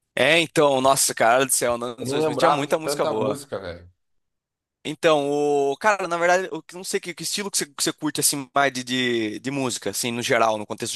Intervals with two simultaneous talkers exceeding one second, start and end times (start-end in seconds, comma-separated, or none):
2.0-3.4